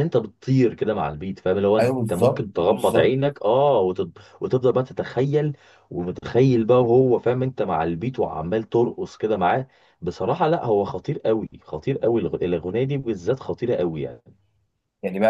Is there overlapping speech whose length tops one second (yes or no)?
yes